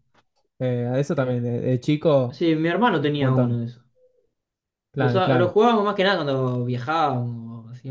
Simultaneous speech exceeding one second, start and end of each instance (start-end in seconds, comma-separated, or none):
none